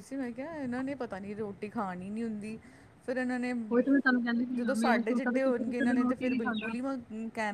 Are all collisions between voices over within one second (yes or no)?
no